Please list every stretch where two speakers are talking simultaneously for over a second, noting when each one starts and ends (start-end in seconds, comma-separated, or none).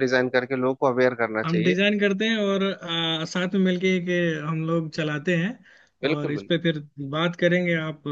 none